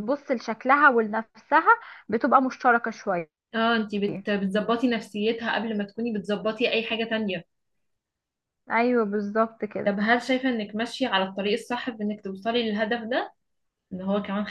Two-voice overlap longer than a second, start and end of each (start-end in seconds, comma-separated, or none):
none